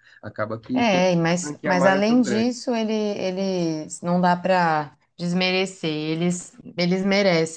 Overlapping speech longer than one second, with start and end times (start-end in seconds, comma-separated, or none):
0.7-2.5